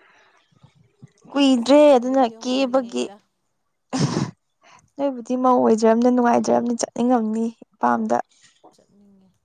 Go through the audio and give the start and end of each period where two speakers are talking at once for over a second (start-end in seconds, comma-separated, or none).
1.5-3.0